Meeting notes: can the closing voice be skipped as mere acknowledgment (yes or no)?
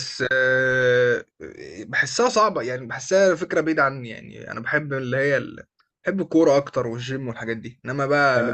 no